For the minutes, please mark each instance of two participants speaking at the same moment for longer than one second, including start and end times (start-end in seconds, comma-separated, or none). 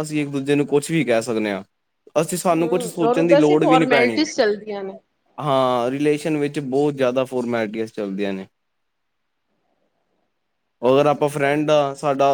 2.6-4.3